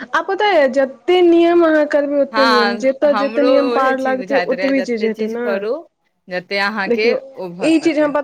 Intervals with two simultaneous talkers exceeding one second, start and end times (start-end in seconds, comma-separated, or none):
2.3-5.1